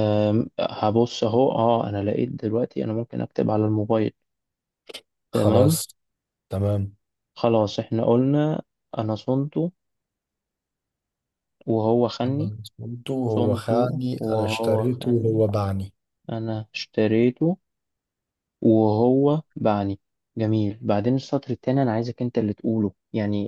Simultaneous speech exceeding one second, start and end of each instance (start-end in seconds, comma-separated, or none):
13.3-15.4